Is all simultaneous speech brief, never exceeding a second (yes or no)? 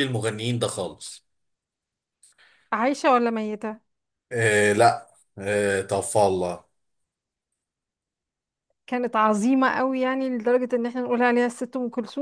yes